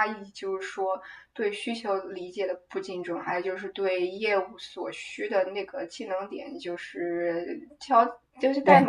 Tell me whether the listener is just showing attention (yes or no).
yes